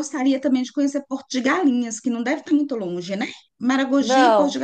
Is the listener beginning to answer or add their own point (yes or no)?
no